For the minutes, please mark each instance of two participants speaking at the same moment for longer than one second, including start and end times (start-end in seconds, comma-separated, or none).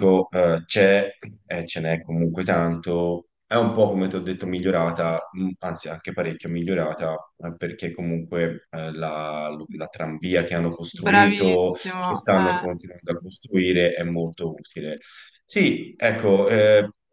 11.1-12.7